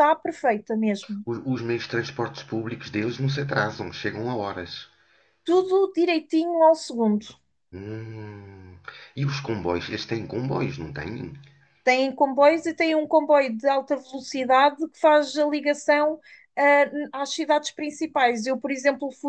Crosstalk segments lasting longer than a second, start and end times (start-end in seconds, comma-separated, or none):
none